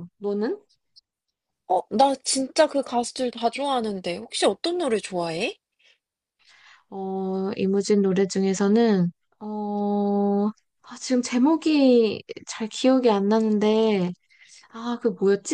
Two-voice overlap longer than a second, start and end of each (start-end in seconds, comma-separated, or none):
none